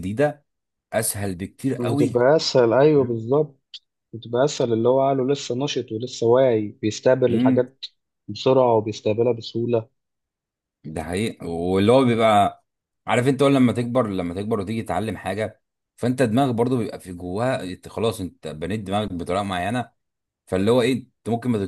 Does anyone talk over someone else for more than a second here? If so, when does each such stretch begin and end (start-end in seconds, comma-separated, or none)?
none